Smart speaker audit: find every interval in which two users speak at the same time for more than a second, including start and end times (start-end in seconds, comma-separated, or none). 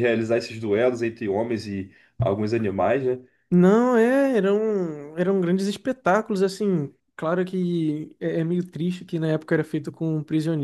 none